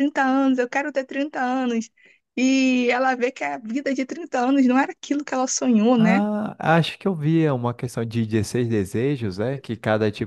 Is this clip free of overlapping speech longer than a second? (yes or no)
yes